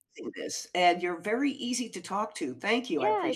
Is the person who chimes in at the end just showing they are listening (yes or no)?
no